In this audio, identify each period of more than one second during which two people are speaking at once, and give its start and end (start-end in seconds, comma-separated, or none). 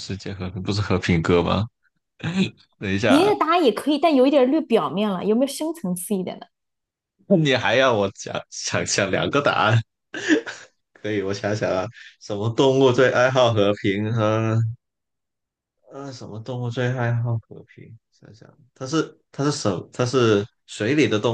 none